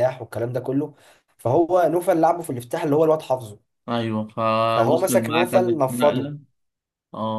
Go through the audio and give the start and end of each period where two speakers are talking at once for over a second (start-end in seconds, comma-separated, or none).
4.7-6.3